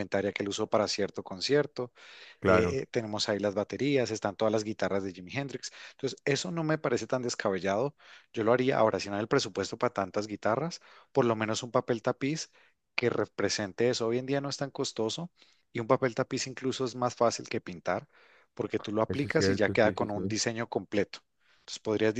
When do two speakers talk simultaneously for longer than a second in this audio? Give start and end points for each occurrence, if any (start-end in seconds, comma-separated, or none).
19.1-20.3